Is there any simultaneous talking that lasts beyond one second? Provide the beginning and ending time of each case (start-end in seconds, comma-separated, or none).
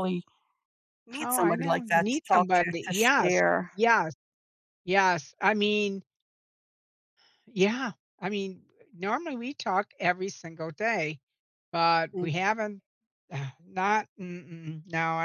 1.2-3.7